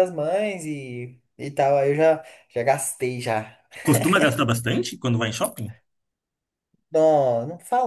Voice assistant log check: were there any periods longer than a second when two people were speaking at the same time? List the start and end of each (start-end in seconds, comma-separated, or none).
none